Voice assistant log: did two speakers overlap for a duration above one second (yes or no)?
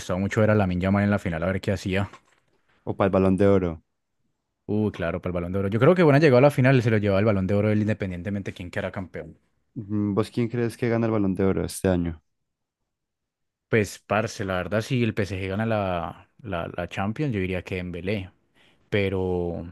no